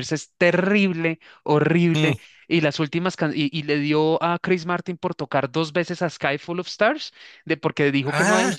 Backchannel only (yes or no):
yes